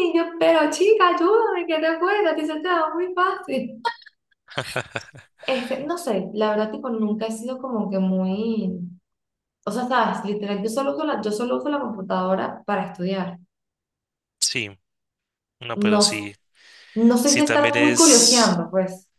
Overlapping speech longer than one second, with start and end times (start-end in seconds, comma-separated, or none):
17.2-18.6